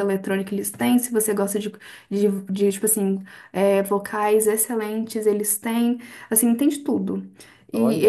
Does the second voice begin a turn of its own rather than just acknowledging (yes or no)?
no